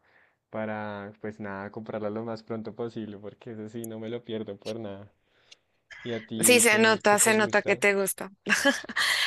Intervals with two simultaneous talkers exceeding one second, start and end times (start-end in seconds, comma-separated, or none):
6.4-7.8